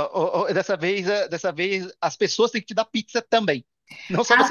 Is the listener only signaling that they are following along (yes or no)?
no